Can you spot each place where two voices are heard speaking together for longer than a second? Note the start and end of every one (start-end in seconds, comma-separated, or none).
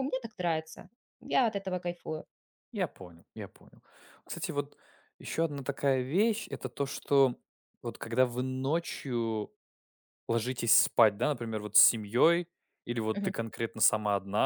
none